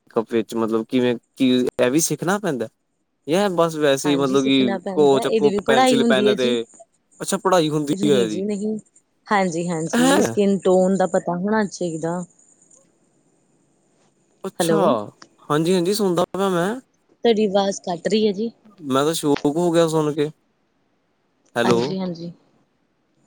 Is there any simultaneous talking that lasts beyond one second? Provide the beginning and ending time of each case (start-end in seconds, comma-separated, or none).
4.1-6.5